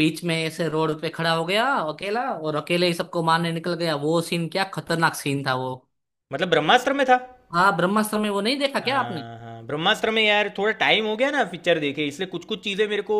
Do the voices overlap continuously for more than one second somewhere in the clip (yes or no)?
no